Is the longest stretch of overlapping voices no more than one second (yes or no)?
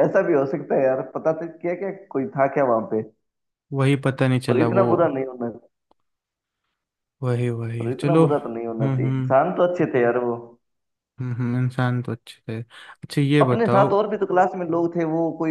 no